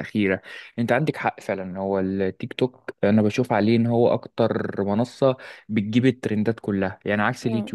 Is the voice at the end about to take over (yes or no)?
no